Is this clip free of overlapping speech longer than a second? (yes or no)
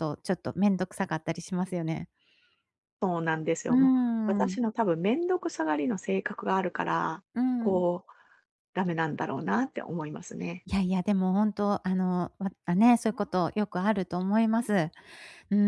yes